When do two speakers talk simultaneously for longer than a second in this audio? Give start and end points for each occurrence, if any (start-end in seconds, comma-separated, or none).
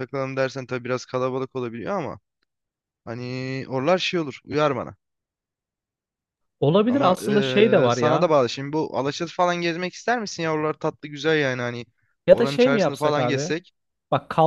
6.9-8.3, 12.3-13.5